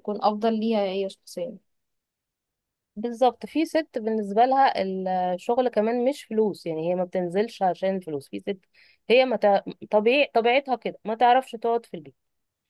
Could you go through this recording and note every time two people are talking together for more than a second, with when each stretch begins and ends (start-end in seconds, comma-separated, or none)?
none